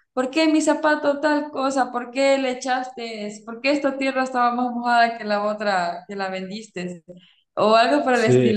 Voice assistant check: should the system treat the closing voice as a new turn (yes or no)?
no